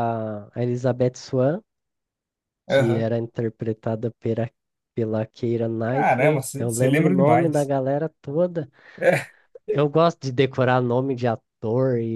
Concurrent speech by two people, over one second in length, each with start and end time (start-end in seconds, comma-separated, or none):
5.9-7.7